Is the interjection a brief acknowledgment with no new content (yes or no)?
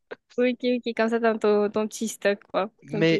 no